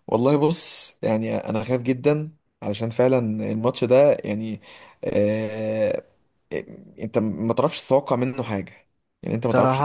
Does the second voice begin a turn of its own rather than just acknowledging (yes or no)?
yes